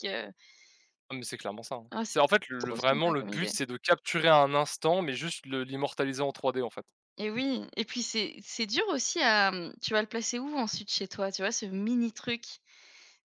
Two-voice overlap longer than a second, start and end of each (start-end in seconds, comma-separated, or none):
1.9-3.5